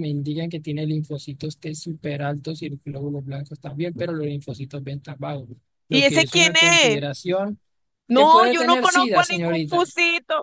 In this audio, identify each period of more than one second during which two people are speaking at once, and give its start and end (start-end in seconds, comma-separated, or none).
5.9-7.2, 8.1-9.9